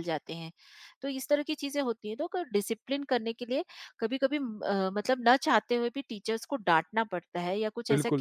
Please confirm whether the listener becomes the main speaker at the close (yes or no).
yes